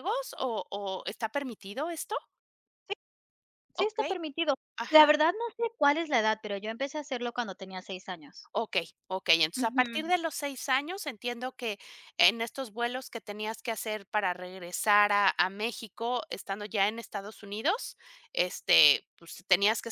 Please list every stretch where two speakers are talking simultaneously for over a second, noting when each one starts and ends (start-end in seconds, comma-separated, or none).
none